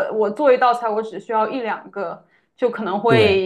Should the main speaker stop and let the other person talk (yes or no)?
no